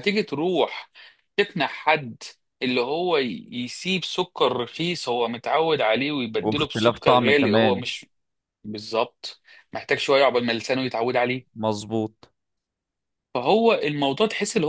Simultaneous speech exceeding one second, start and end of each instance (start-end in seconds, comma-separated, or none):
6.4-7.9